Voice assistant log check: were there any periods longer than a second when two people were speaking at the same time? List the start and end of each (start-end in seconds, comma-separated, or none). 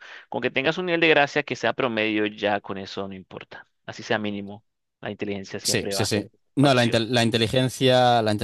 5.6-7.0